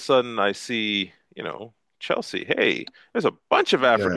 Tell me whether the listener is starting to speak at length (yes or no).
no